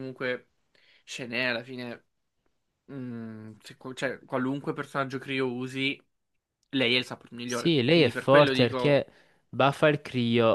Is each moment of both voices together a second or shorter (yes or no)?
no